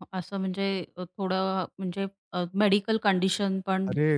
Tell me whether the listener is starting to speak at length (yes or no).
yes